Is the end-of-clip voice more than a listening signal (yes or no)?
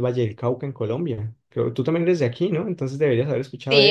yes